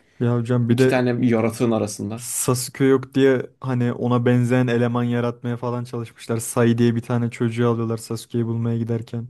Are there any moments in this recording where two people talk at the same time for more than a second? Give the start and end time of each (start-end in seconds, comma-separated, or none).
none